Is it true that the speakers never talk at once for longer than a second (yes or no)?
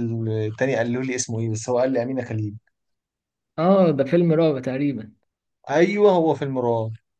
yes